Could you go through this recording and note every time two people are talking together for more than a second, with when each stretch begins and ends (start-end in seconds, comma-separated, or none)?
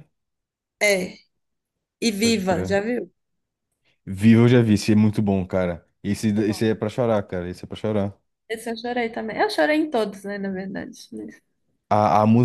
none